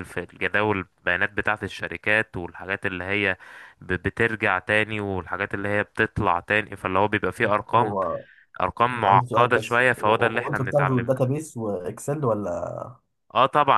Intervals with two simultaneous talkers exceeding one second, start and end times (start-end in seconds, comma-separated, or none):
9.1-11.3